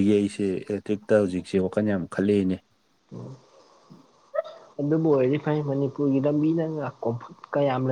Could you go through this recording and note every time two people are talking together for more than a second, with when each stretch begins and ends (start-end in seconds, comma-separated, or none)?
none